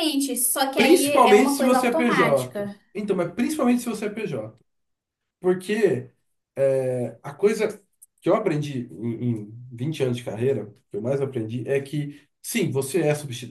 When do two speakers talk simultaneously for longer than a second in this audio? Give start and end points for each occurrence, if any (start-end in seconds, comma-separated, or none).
0.7-2.8